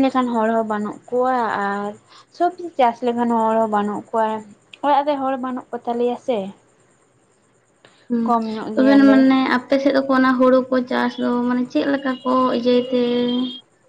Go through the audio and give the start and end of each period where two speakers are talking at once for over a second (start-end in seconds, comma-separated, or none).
none